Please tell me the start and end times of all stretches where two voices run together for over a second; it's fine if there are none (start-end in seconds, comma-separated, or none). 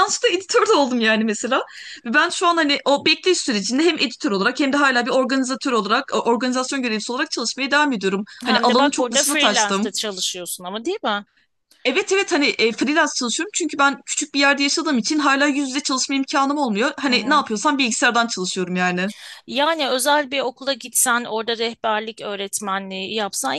8.5-9.9